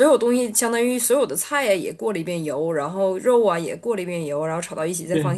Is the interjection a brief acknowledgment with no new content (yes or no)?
yes